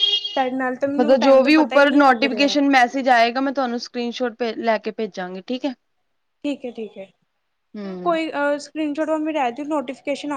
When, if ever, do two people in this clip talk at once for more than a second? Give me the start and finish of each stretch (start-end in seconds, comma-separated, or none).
1.0-2.6